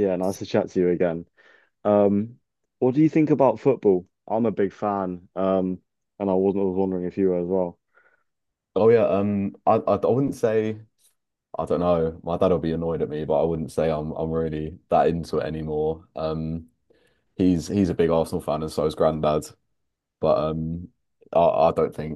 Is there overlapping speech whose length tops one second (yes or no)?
no